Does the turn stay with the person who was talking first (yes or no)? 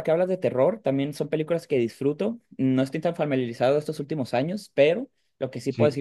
yes